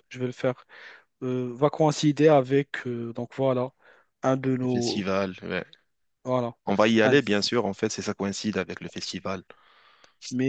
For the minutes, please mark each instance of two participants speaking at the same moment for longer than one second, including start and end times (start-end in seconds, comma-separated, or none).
none